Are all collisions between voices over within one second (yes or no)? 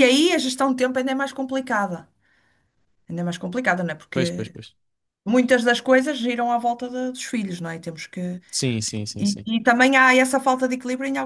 yes